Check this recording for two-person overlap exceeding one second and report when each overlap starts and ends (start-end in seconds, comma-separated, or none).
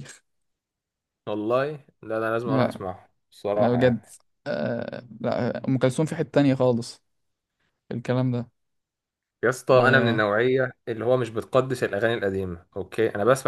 none